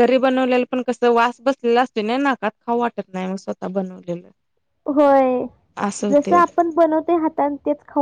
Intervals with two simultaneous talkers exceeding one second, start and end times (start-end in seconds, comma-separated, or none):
none